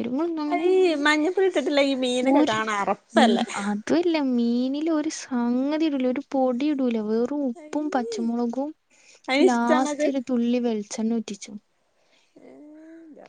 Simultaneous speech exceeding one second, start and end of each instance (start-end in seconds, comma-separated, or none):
none